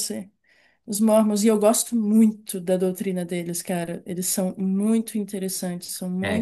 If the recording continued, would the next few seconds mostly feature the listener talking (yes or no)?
yes